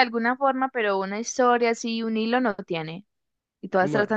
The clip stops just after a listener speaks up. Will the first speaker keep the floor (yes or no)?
yes